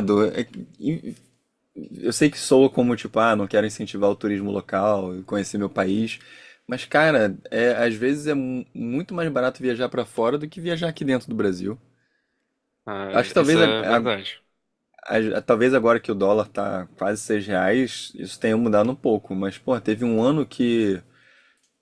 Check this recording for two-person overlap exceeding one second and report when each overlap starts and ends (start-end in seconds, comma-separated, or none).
none